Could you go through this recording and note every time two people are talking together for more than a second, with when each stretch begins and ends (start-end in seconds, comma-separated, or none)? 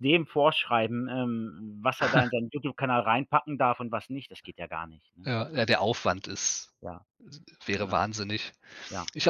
none